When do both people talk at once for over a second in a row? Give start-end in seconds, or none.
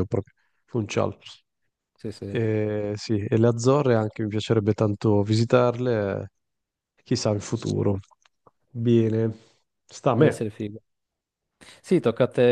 none